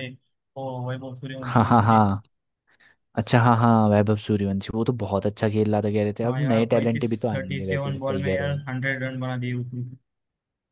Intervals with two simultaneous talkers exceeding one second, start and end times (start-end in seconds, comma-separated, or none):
6.2-8.6